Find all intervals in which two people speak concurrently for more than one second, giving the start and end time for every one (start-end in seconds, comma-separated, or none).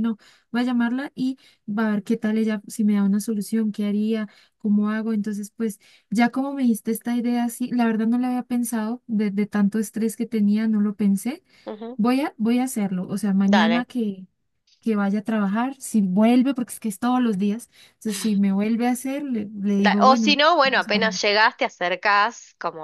19.8-21.2